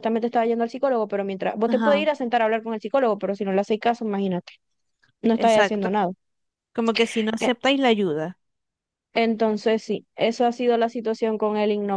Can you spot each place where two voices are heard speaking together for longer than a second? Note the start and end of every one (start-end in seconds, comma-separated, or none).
none